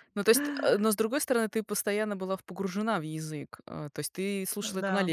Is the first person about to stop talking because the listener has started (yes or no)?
no